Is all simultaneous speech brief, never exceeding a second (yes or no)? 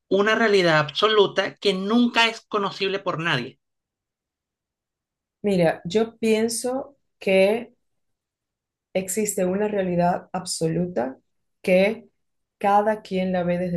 yes